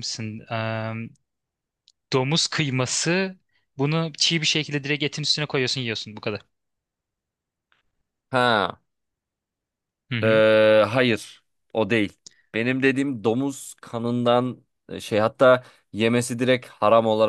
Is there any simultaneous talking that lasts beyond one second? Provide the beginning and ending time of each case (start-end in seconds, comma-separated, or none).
none